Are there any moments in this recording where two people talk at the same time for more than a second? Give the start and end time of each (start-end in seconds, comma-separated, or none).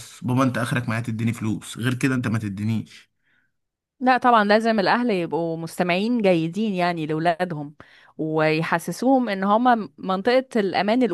none